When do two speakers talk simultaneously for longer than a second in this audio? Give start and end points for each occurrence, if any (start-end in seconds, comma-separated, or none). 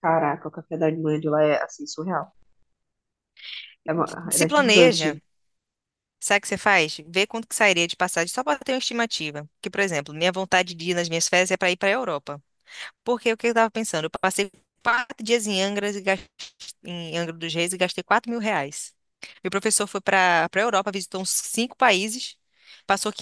4.0-5.2